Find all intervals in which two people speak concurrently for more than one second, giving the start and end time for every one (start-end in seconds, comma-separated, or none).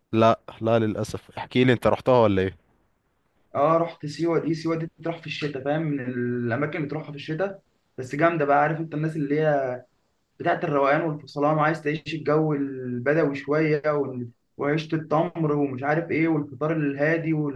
none